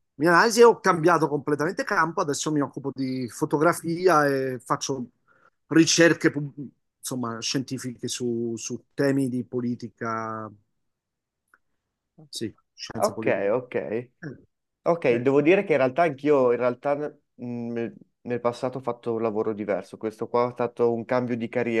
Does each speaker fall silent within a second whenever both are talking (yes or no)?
yes